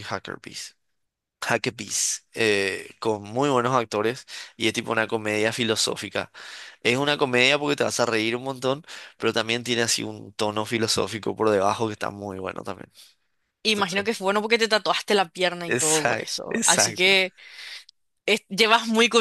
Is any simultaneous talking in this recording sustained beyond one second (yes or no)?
yes